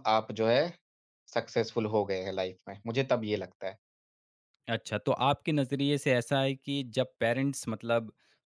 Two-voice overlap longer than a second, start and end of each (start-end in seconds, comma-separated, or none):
none